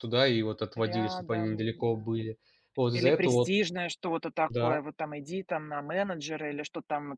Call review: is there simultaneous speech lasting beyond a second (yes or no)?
yes